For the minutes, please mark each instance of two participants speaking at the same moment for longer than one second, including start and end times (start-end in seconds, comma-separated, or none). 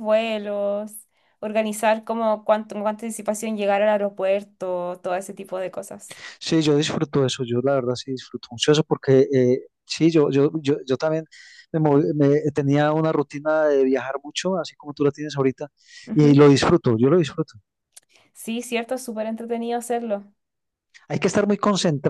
none